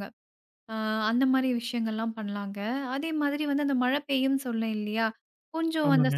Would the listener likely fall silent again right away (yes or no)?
yes